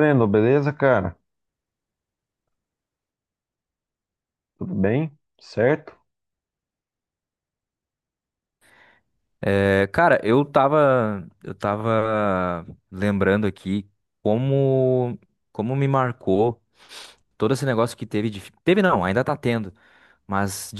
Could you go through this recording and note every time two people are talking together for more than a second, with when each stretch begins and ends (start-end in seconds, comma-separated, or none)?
none